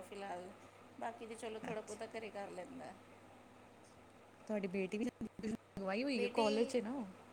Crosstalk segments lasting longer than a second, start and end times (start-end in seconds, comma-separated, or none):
none